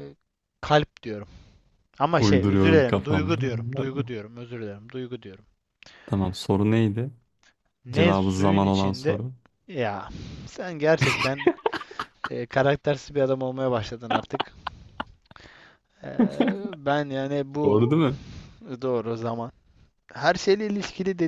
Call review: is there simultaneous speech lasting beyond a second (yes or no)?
yes